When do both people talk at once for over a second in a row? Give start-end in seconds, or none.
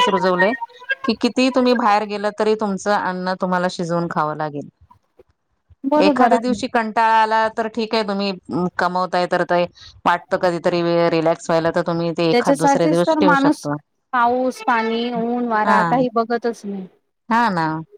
12.3-13.6